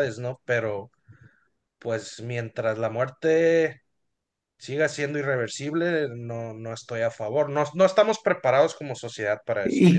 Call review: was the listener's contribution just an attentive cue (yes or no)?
no